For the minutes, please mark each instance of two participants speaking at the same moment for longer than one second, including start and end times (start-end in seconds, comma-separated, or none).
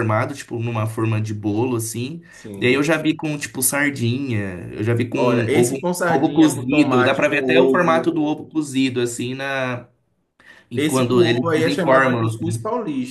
5.1-8.1, 10.8-12.4